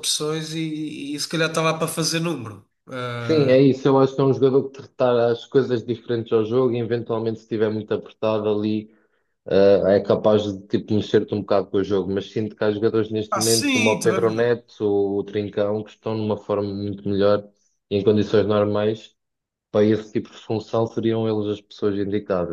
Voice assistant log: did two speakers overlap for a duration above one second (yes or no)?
yes